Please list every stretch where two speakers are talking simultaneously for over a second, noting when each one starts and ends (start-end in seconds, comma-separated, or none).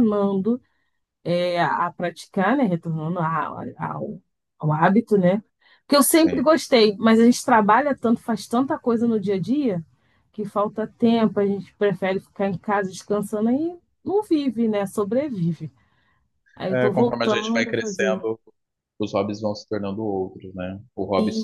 16.7-18.2